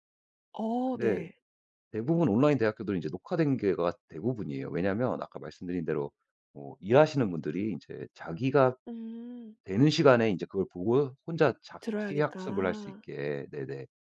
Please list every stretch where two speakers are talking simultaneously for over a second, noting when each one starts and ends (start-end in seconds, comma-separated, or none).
11.8-13.0